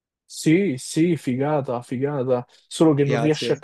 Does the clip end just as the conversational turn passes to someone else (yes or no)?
no